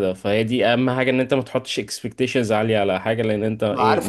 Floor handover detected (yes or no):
yes